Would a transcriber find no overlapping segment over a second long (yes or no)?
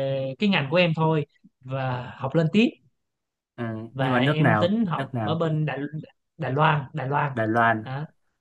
no